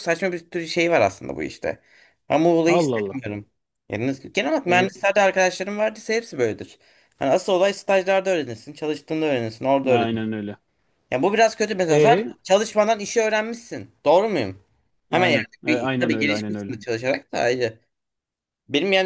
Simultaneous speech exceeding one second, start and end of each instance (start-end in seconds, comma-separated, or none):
15.1-16.7